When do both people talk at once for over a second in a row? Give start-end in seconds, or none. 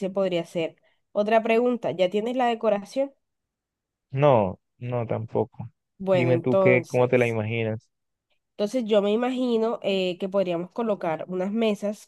6.1-7.4